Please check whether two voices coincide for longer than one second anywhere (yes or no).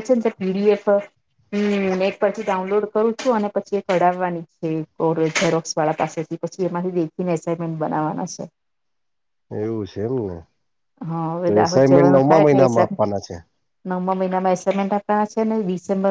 yes